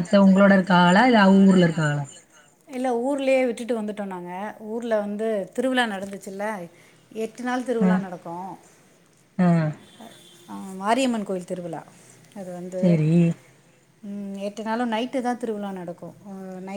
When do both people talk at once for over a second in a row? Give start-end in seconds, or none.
none